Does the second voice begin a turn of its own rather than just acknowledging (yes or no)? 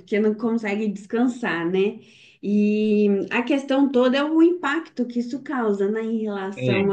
no